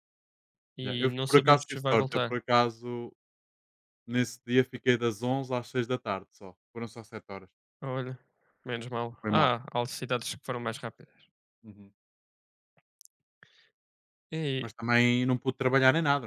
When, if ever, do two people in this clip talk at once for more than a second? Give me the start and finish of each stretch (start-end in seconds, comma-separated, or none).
0.8-2.4